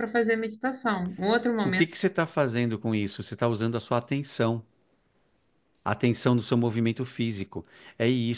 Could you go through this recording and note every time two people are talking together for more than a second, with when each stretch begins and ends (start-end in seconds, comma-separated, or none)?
none